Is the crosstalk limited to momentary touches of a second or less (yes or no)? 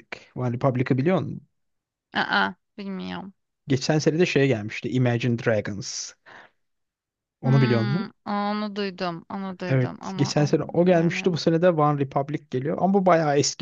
no